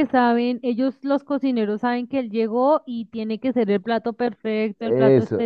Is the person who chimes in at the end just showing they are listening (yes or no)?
no